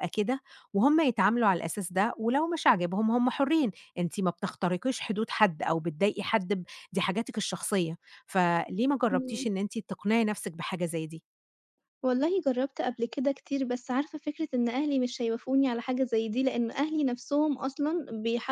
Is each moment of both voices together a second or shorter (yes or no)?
yes